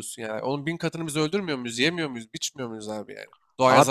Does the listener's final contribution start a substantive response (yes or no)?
no